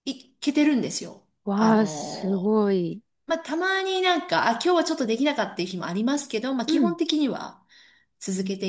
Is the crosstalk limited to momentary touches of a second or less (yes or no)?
yes